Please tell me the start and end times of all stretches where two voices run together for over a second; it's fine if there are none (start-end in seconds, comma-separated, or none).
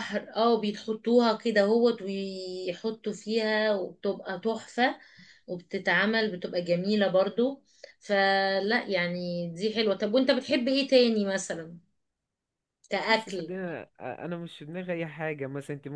none